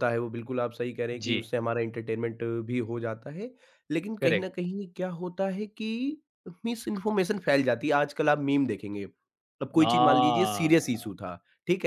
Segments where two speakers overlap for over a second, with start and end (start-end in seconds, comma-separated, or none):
9.8-11.1